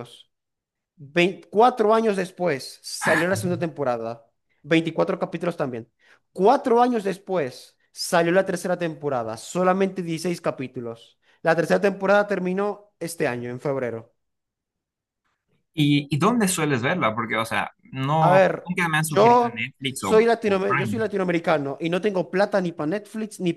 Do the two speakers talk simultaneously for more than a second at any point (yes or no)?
yes